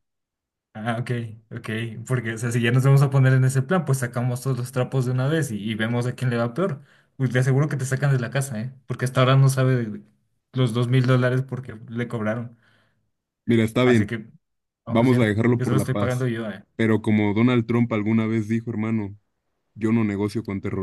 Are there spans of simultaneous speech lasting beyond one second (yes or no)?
yes